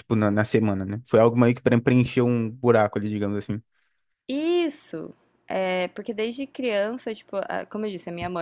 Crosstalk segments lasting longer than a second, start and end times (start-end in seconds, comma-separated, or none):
none